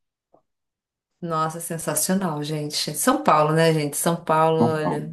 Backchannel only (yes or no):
yes